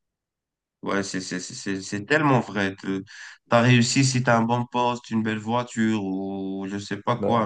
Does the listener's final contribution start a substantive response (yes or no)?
no